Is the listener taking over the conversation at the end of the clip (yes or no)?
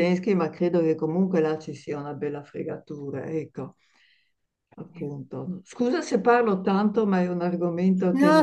yes